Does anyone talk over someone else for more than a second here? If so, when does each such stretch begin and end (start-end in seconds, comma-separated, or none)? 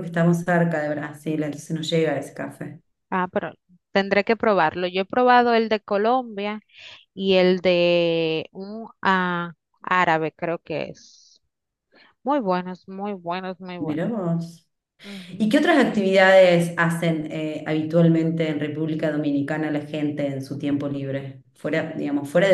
none